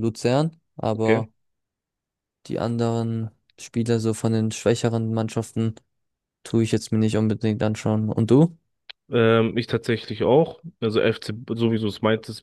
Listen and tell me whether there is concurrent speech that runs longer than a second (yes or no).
no